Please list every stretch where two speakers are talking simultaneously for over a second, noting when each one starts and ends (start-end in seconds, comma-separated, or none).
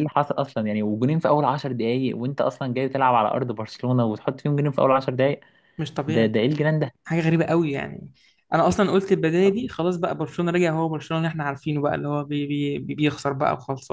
none